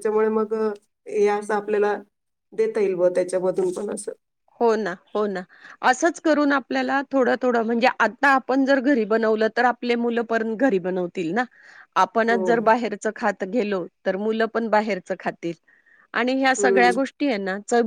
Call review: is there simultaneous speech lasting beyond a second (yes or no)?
no